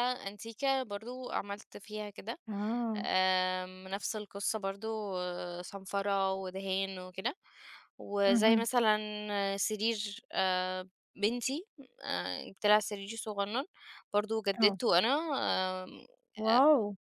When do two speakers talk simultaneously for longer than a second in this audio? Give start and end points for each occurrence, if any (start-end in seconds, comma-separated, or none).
none